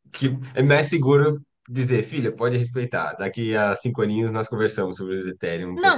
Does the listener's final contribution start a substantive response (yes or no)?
yes